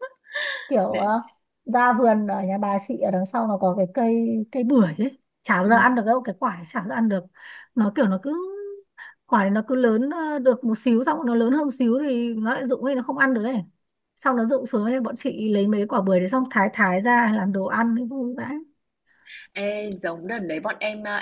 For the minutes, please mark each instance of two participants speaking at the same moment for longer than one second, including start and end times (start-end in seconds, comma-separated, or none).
none